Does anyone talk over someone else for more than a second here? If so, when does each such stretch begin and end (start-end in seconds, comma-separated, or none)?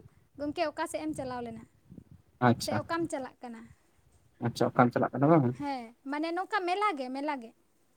none